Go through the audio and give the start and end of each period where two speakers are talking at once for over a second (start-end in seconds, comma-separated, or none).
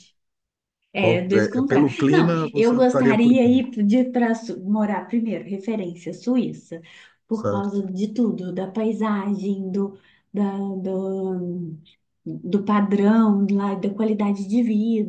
1.0-3.6